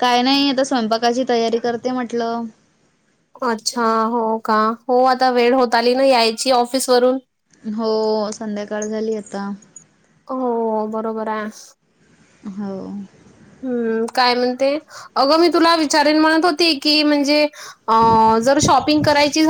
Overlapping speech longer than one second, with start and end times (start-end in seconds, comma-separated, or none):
none